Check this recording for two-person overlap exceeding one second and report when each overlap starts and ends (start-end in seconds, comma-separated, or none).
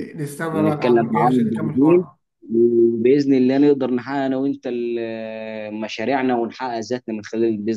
0.5-2.0